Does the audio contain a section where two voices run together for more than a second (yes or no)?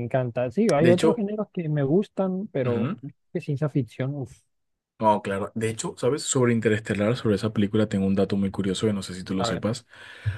no